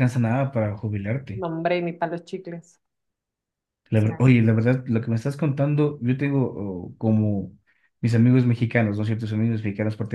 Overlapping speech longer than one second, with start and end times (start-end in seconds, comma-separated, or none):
none